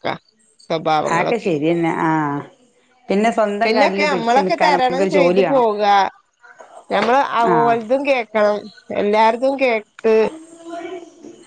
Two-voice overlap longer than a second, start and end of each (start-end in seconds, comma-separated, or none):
3.6-5.7